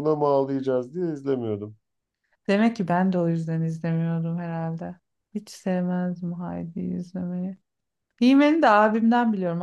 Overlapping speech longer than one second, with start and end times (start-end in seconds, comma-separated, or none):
none